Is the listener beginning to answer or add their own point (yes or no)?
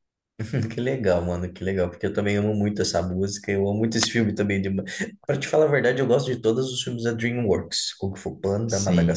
yes